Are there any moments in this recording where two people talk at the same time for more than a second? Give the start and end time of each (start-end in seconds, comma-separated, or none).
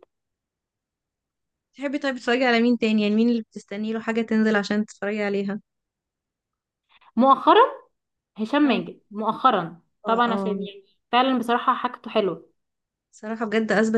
none